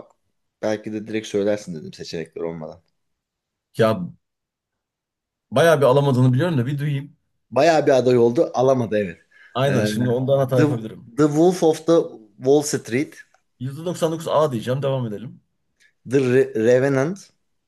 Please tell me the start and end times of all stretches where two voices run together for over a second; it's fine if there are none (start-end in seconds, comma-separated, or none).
none